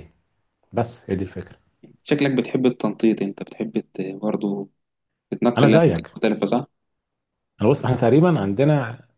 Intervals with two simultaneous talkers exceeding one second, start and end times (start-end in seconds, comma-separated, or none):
none